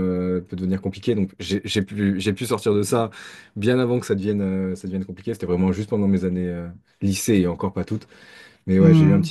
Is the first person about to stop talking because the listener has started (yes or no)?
no